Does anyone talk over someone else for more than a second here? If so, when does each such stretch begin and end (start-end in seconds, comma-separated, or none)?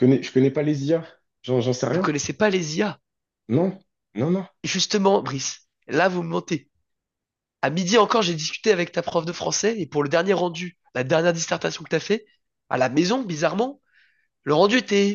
none